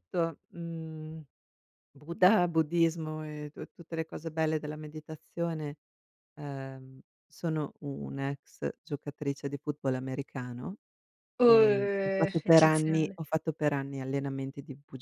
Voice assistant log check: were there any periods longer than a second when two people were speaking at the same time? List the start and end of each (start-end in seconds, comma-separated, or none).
11.4-13.2